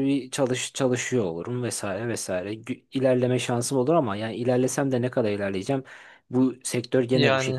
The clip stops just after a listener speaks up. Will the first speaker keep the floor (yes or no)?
yes